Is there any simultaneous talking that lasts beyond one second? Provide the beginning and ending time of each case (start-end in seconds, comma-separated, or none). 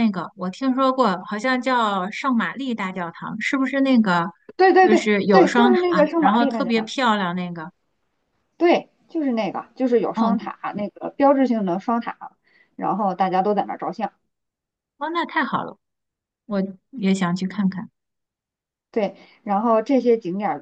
4.8-6.9